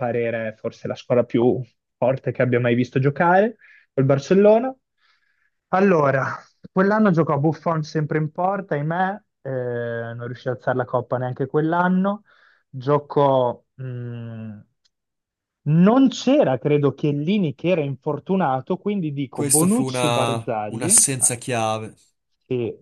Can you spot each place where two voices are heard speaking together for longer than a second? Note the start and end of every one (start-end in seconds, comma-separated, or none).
19.3-21.3